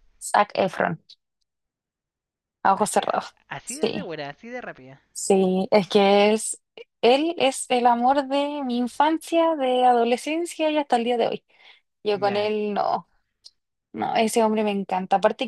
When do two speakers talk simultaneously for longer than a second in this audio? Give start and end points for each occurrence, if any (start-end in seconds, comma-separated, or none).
2.8-4.1